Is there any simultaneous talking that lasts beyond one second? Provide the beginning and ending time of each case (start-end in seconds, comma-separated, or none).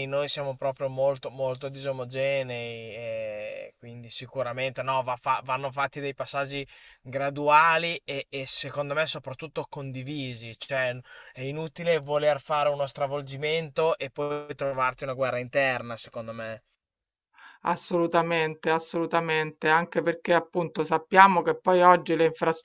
none